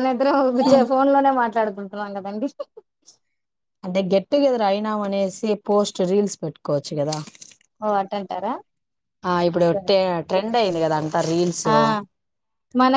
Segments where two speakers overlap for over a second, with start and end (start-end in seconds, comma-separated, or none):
none